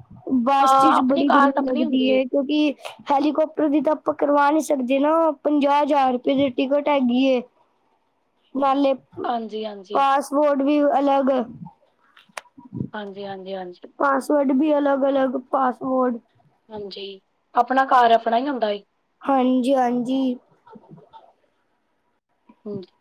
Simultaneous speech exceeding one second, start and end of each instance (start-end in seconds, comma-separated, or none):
0.6-2.1